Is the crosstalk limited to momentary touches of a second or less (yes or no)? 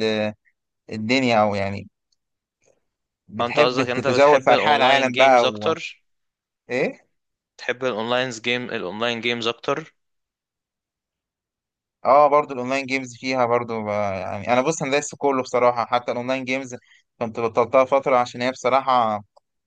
no